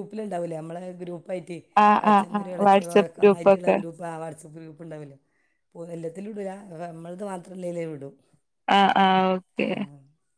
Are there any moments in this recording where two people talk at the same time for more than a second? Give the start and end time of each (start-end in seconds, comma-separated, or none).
2.1-3.8